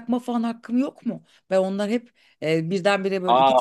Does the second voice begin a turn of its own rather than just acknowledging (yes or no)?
no